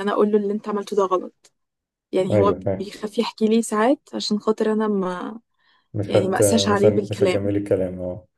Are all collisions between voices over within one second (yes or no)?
no